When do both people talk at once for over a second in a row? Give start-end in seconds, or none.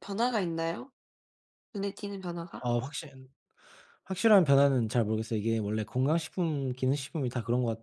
none